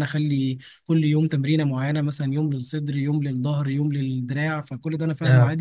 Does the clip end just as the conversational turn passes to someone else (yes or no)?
no